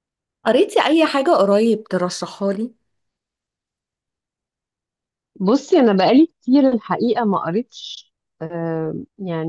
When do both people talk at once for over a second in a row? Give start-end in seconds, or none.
none